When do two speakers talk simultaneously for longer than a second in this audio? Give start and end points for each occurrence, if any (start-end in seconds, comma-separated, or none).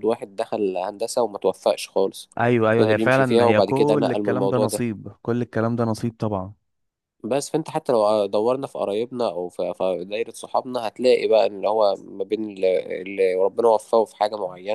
2.8-4.8